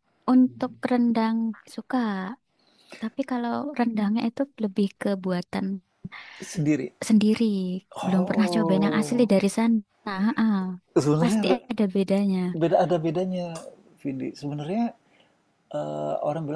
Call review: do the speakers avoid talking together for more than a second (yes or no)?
no